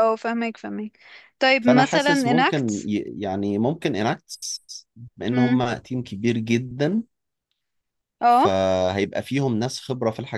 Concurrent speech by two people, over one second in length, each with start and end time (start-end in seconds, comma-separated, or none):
1.6-2.9